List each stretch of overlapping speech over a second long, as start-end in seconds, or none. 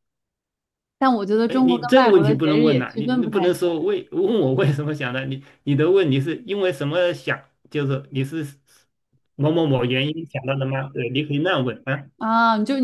1.4-3.7